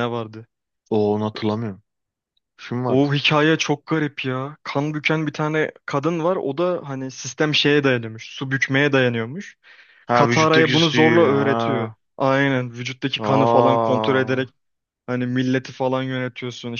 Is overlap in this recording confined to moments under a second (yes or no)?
no